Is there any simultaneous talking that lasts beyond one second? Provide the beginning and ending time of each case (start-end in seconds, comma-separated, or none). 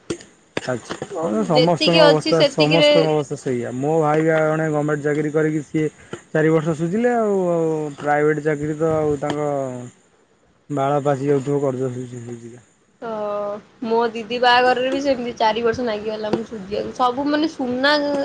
1.1-2.9